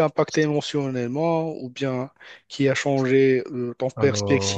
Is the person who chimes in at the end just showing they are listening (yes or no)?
yes